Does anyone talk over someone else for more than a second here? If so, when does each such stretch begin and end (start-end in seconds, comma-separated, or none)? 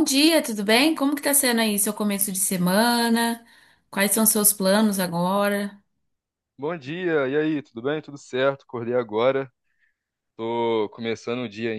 none